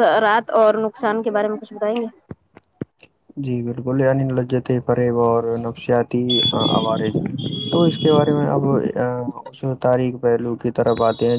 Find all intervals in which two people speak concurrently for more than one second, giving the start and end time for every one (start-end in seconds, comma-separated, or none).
none